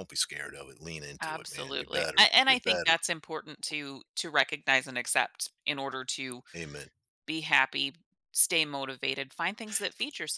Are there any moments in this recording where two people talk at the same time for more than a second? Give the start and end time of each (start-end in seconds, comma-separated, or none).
1.2-3.0